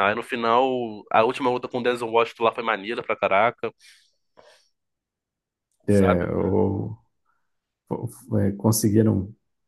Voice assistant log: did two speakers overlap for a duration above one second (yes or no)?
no